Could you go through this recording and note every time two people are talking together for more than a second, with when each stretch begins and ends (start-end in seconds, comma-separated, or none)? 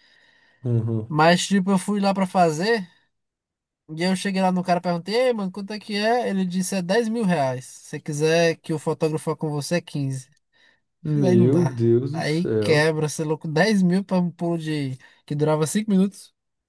11.2-12.9